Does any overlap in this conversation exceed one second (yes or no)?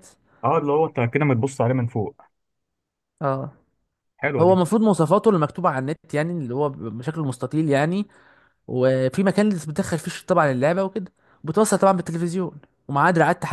no